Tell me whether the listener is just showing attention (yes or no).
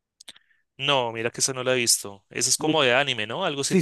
no